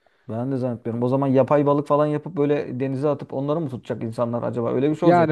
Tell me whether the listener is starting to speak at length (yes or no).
yes